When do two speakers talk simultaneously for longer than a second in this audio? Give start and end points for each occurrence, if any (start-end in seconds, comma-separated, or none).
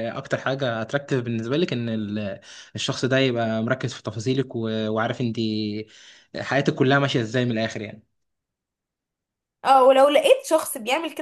none